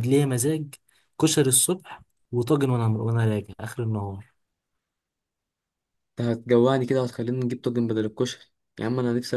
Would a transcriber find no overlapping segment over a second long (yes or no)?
yes